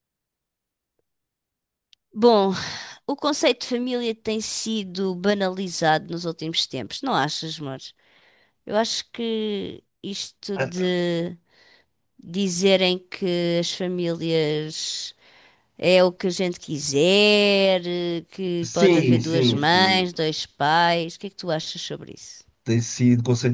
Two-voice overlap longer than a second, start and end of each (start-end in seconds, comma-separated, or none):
18.6-20.1